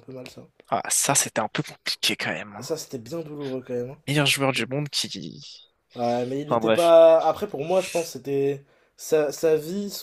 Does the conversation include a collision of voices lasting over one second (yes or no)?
no